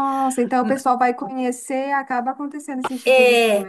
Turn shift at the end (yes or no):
yes